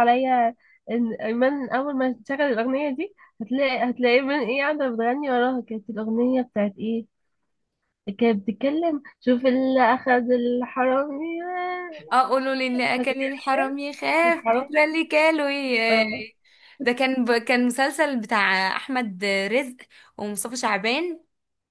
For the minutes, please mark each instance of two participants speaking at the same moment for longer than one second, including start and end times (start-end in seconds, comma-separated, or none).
none